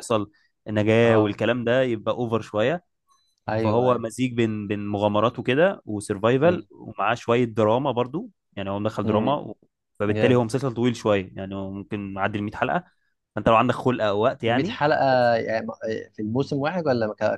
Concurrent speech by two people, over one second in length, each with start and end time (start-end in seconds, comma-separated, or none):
none